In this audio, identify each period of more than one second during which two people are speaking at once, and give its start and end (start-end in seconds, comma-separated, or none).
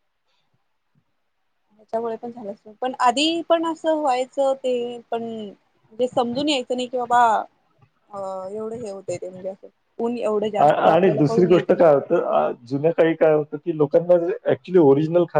10.6-11.9